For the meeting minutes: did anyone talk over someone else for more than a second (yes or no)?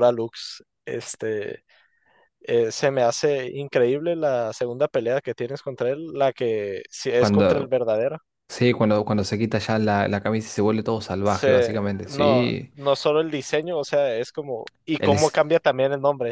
yes